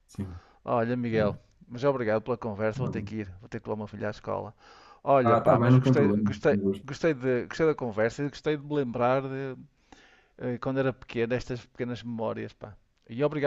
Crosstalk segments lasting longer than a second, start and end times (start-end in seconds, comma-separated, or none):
5.2-6.8